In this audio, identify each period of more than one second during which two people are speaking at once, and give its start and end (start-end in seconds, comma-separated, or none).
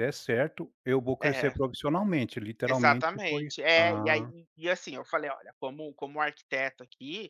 2.7-4.3